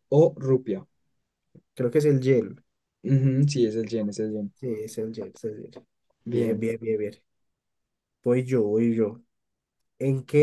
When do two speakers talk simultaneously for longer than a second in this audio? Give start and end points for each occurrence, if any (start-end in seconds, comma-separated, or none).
none